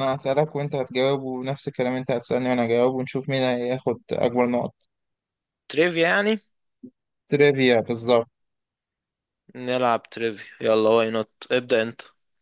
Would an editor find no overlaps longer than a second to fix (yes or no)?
yes